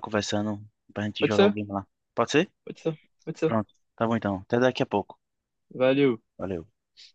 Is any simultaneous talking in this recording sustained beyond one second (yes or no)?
no